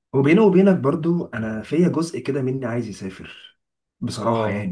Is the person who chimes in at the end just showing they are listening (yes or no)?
yes